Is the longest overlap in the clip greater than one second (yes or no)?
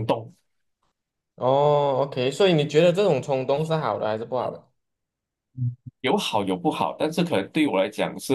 no